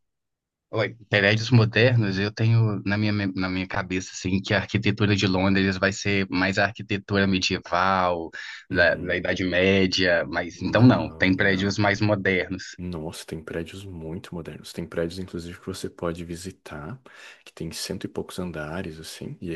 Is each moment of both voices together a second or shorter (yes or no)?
no